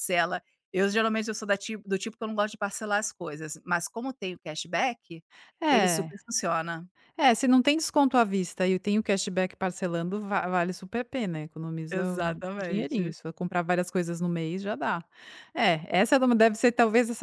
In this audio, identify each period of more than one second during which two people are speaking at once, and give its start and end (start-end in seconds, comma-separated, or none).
11.9-13.1